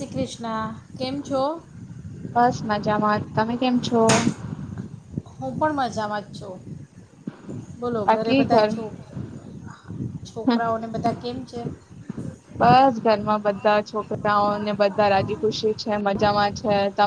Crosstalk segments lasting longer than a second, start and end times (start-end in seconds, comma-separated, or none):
none